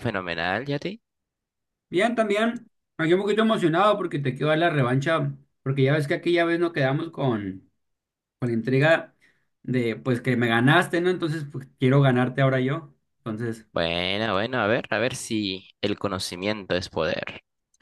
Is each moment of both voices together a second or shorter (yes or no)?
yes